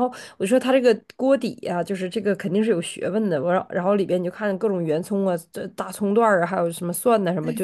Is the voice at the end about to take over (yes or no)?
no